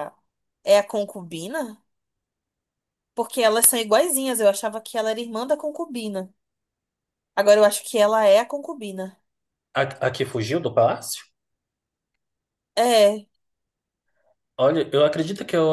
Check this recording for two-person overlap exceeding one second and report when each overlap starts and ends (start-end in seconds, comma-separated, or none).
none